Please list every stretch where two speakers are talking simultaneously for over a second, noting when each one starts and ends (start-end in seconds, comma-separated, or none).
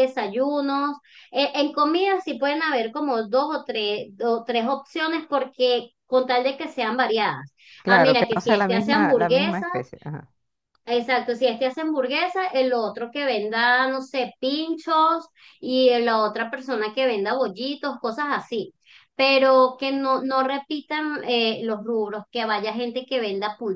7.8-9.7